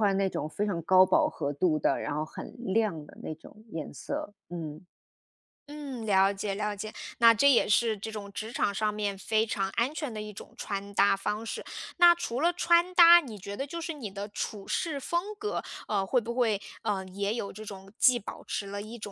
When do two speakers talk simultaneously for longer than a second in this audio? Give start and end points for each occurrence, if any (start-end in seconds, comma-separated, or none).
none